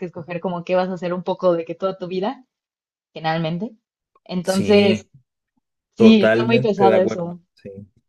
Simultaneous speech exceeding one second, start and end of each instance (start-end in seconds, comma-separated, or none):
6.0-7.4